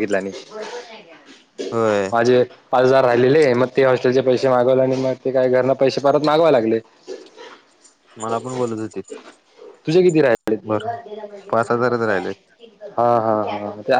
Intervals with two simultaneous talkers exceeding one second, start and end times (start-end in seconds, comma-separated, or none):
none